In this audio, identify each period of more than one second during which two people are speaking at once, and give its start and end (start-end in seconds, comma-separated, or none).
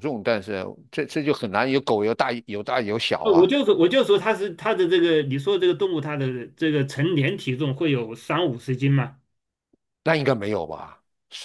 none